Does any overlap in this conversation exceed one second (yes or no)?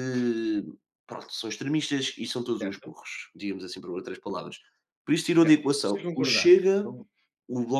yes